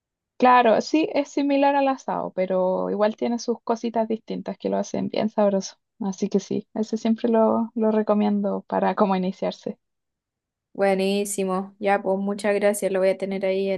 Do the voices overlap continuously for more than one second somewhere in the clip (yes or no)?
no